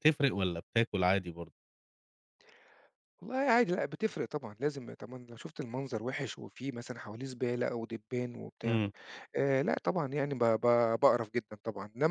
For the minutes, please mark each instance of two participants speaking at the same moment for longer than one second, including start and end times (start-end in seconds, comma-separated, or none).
none